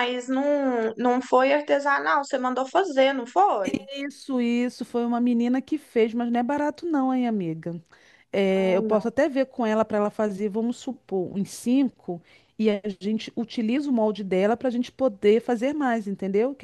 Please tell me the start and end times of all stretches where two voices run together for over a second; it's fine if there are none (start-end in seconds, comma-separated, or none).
none